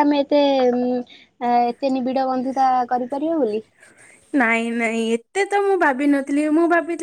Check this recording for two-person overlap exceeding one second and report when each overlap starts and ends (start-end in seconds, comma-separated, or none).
none